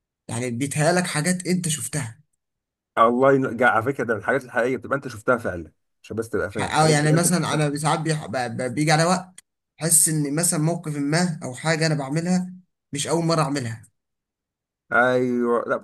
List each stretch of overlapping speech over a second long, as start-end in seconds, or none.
none